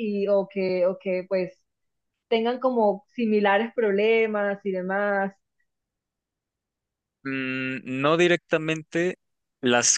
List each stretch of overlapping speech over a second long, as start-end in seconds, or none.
none